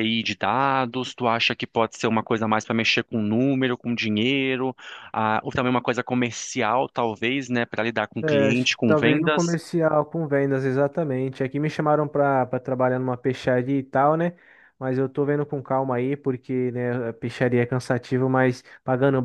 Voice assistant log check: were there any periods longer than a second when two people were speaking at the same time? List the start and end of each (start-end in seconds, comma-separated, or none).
8.2-9.6